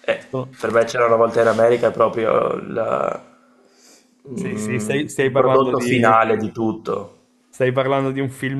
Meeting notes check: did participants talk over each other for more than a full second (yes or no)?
yes